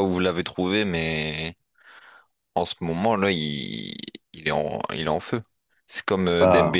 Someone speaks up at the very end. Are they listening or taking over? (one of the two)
listening